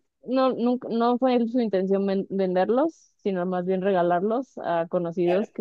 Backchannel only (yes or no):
yes